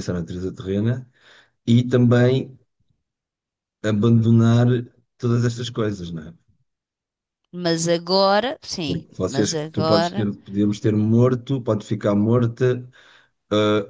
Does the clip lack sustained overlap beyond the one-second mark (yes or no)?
no